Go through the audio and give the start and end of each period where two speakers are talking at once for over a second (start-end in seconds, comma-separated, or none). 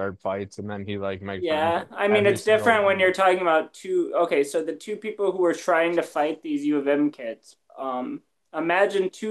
1.4-3.1